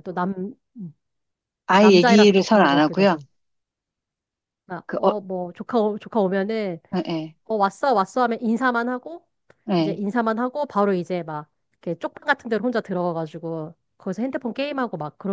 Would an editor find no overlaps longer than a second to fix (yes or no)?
no